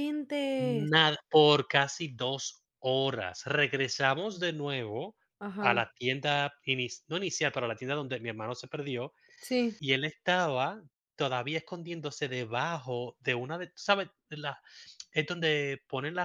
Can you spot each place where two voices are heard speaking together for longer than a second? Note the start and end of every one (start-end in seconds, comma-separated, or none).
none